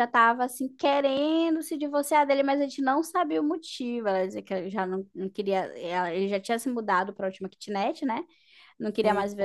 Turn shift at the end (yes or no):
no